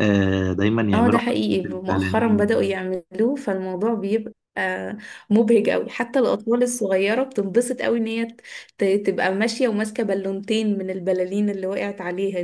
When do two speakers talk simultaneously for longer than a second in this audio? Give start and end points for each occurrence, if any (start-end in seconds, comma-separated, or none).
0.9-2.7